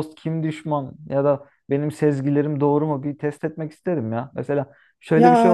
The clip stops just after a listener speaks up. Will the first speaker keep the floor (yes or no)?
yes